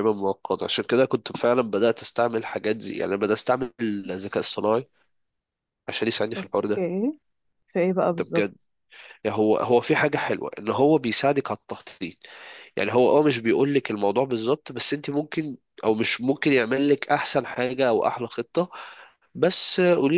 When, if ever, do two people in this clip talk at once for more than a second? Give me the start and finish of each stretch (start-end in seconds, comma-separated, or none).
none